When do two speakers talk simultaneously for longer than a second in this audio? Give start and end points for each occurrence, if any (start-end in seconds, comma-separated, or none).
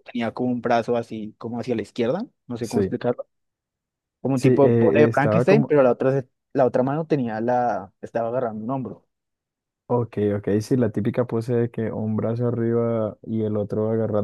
4.3-5.7